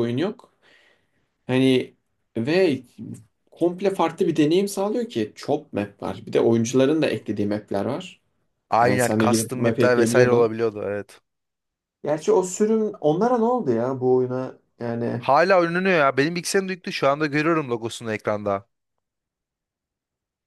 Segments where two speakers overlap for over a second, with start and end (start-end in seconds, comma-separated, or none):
8.8-10.5